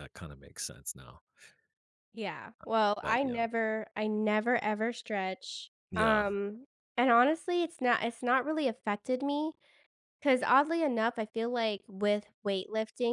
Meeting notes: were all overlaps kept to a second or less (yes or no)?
yes